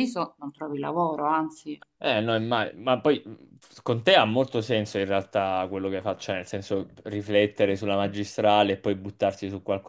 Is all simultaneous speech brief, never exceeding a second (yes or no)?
yes